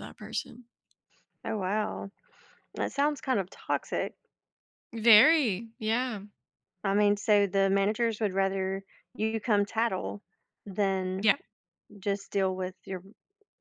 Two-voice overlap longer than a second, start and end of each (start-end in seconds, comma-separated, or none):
none